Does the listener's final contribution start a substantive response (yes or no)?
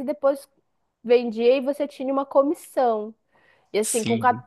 no